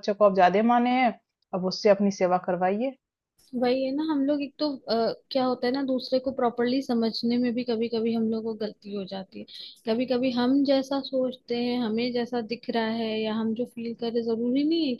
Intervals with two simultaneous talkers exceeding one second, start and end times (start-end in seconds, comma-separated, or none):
none